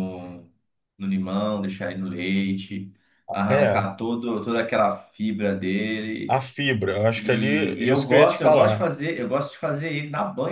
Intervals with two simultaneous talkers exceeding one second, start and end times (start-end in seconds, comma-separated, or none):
7.2-8.8